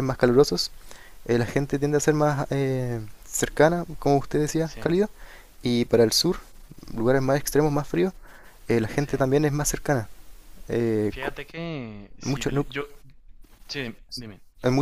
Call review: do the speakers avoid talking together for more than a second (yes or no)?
yes